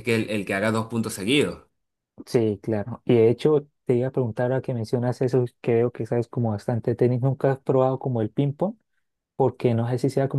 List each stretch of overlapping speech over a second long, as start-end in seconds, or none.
none